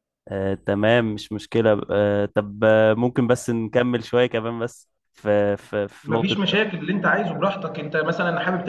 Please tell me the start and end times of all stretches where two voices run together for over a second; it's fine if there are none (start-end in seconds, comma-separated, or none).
none